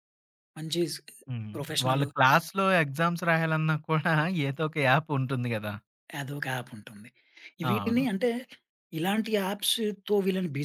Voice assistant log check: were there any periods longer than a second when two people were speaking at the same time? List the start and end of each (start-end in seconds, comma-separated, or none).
none